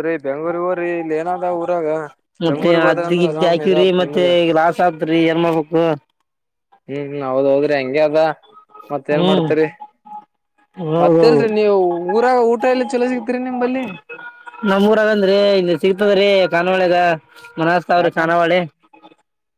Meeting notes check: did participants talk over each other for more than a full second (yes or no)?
yes